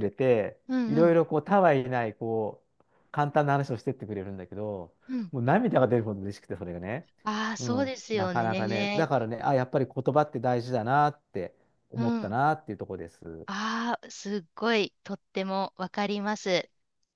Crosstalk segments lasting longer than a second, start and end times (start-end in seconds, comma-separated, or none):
7.6-9.1